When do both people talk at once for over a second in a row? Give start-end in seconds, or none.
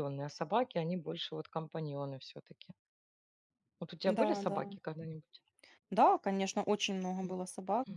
none